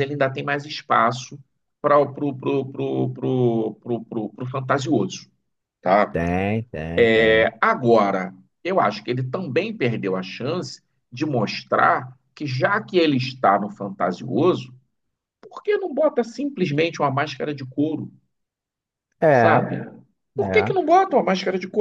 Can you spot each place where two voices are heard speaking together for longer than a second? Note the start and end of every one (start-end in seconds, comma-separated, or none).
none